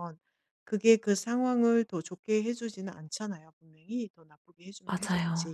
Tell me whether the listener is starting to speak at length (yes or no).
no